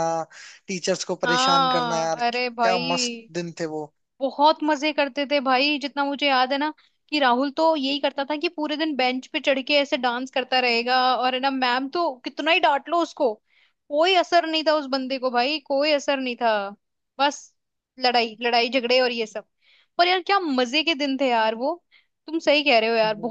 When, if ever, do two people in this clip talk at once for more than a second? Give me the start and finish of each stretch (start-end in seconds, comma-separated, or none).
1.2-3.3